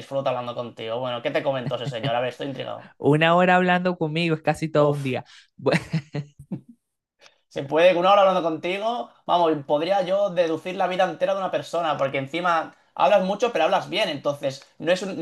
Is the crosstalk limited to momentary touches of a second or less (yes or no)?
yes